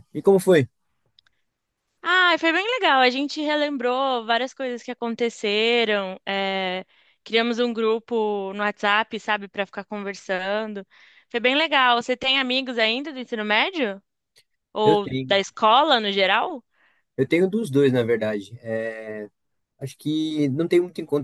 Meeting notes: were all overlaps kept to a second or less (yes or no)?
yes